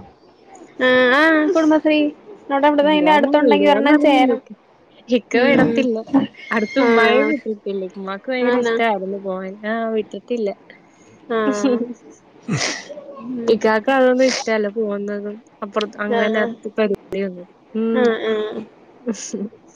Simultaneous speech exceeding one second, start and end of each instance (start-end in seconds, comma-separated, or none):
2.8-4.4